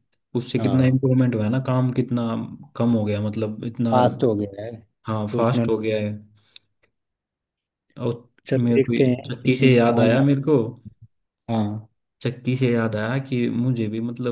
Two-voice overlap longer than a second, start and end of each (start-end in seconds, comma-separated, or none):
8.5-10.2